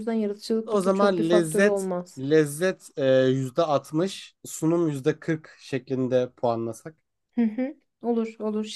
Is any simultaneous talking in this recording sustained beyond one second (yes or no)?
yes